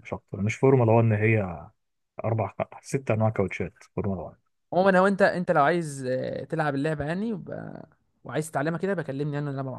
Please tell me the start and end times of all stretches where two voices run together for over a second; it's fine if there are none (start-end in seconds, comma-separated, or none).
none